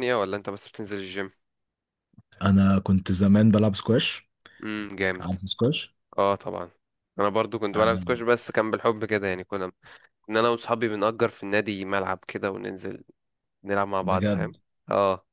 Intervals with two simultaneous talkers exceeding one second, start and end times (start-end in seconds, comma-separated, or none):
none